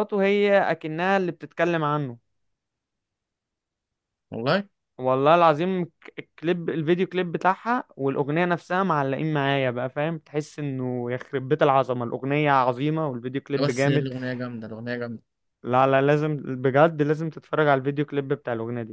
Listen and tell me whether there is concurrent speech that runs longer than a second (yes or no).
no